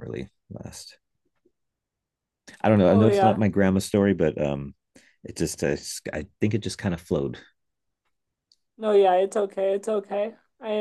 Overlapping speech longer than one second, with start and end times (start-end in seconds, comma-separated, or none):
none